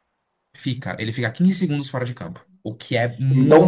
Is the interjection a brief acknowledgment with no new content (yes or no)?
no